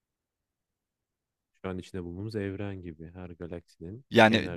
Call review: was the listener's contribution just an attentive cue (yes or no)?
no